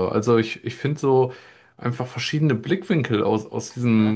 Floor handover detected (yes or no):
no